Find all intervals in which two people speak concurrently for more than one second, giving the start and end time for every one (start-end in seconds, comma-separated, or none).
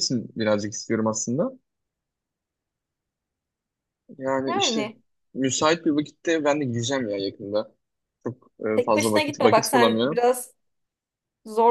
8.7-10.2